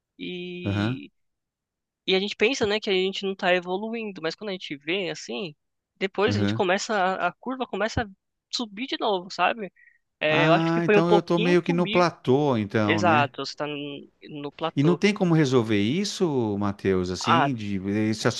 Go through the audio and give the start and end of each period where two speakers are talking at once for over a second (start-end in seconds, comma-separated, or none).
10.3-12.1